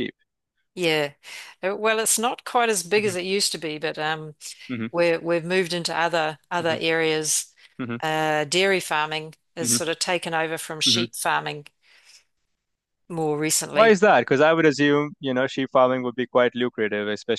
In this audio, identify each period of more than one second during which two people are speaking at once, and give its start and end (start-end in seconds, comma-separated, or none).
none